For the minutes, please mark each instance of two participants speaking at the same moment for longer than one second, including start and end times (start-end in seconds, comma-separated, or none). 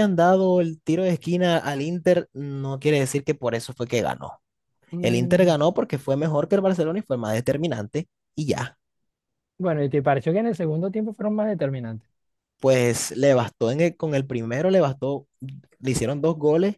none